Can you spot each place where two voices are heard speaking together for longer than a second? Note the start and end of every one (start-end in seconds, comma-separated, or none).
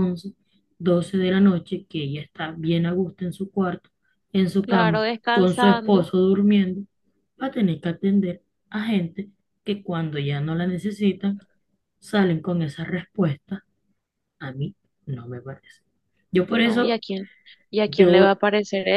4.6-6.0